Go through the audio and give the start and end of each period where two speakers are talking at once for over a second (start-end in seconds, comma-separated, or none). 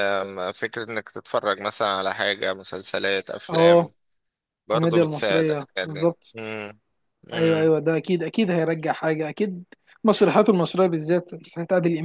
4.7-6.3